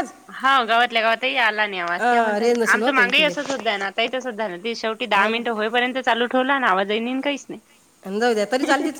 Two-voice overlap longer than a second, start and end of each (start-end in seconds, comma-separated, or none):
1.8-3.3